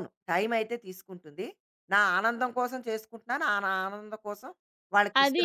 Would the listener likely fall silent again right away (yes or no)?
no